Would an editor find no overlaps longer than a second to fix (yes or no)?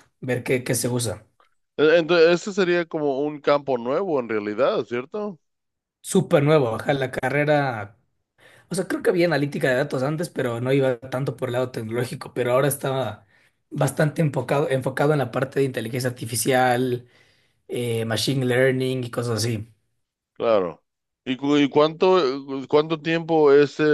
yes